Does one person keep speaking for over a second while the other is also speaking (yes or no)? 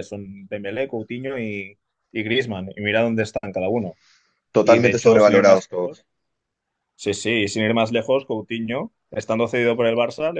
yes